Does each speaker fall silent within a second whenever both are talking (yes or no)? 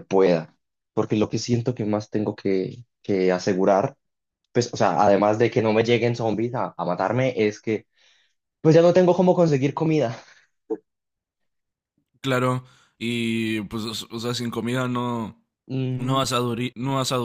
yes